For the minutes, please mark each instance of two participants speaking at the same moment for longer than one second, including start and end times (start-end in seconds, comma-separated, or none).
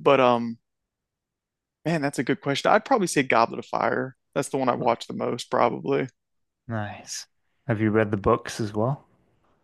none